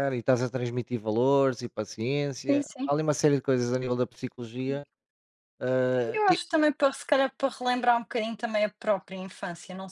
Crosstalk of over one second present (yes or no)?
no